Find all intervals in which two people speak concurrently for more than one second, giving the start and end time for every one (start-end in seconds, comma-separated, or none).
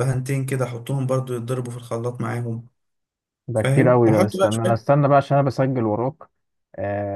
3.5-4.9